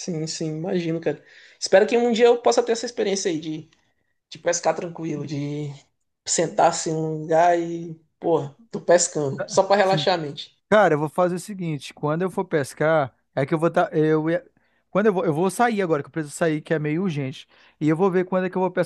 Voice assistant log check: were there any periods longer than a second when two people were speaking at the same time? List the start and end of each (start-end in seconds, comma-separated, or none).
none